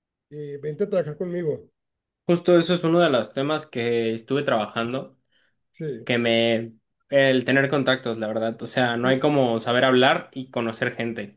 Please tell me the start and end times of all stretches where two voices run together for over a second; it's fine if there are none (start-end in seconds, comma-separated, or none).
none